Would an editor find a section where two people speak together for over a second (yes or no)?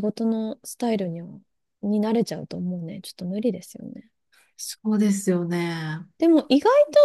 no